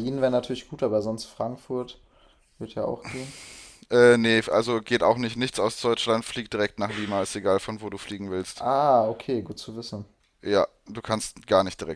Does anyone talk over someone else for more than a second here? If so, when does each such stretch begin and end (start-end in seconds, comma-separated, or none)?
none